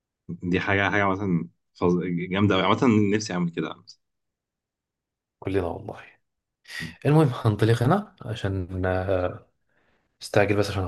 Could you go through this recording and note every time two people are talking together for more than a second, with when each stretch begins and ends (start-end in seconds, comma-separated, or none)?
none